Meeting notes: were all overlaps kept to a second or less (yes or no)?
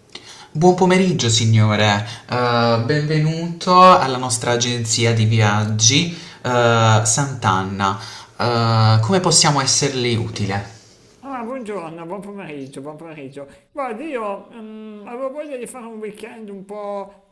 yes